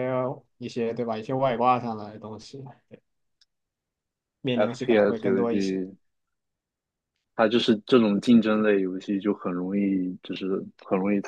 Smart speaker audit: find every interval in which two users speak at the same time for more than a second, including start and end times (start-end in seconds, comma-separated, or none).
4.5-5.8